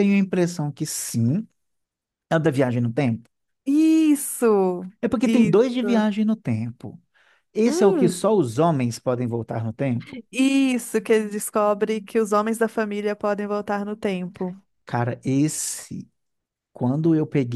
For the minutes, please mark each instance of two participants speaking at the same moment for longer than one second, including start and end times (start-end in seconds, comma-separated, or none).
none